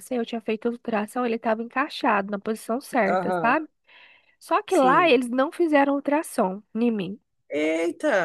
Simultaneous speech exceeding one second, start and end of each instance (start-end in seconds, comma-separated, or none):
none